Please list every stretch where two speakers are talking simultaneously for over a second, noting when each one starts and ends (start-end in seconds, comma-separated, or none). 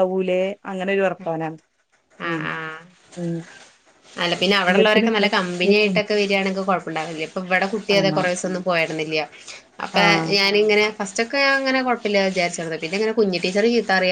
4.7-6.0